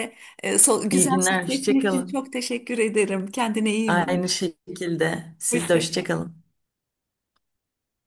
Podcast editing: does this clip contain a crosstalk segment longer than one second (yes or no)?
yes